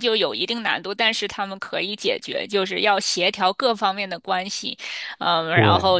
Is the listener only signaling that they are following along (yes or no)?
yes